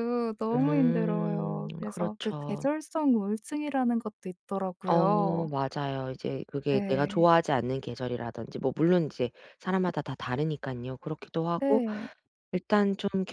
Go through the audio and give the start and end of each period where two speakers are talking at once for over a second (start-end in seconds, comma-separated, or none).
0.5-2.6